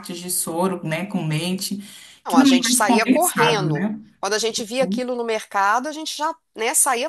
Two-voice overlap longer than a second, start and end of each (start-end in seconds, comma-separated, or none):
2.3-4.0